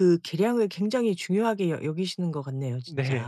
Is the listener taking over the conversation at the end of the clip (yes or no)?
yes